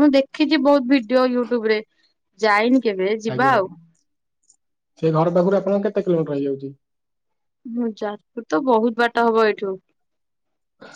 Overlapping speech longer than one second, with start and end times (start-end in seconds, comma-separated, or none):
none